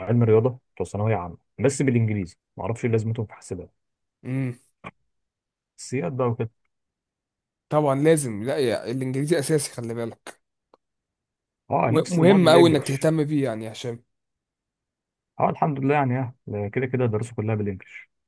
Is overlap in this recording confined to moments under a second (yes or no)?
no